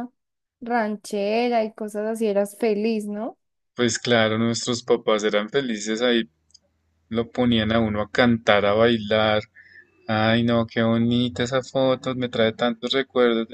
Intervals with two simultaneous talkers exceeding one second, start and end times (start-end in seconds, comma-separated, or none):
none